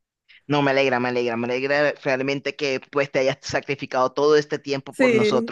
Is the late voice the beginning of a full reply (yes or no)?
no